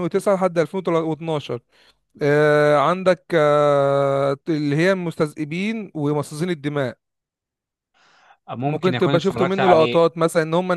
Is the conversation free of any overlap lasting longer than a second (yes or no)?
no